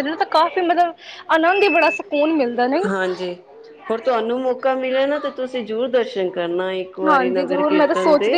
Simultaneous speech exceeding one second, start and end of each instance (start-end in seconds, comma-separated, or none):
none